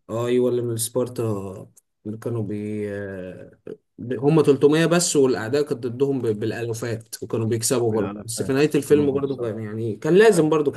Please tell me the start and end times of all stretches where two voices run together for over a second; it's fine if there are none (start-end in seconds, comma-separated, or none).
7.9-9.5